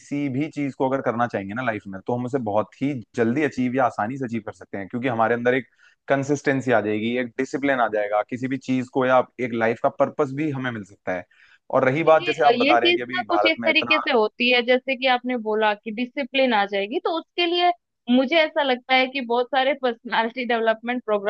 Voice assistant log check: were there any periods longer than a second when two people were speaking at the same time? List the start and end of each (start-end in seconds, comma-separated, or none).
12.1-14.0